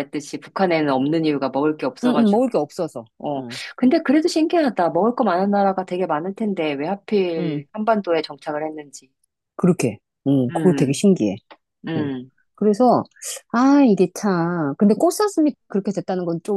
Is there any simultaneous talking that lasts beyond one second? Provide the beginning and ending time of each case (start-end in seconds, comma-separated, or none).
none